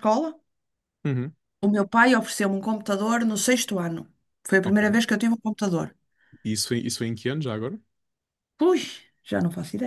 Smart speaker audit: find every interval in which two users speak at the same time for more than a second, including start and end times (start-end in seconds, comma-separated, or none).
none